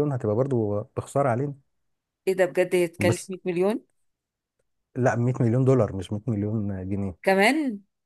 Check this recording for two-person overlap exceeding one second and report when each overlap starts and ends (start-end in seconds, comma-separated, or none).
none